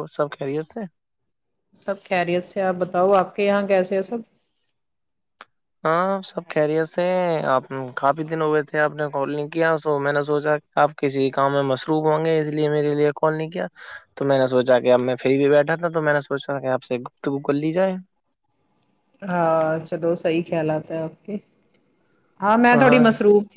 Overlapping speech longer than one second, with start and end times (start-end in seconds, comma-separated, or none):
none